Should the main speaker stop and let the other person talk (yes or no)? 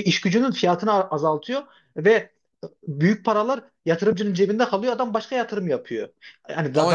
no